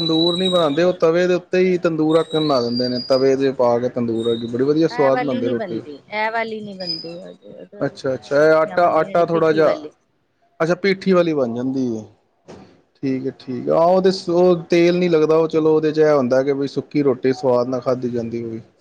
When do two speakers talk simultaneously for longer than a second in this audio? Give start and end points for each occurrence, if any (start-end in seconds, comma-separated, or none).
7.9-9.9